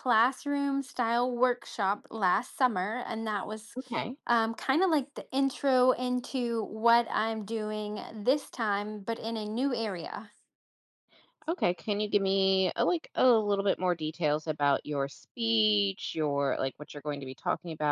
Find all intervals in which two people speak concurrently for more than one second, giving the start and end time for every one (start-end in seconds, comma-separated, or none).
none